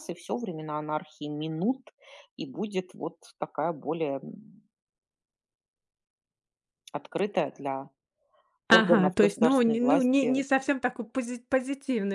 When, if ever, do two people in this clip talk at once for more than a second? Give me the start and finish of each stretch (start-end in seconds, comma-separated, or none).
8.7-10.4